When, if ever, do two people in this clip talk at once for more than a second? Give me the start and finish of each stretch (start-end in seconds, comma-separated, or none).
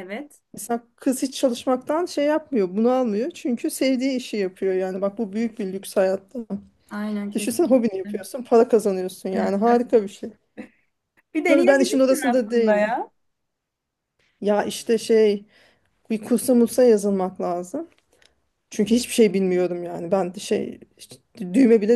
11.5-13.0